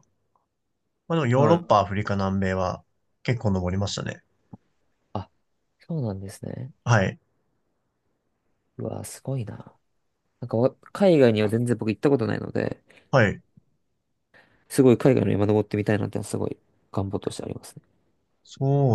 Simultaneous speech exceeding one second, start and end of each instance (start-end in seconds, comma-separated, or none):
none